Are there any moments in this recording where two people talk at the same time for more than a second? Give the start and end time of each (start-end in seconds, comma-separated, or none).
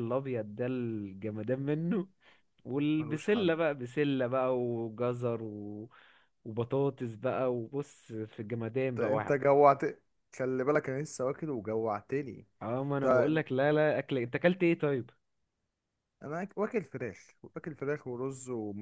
none